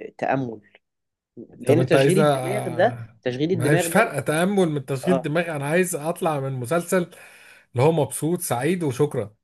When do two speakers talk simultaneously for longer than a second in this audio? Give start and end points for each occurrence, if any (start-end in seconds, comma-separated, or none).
1.6-4.1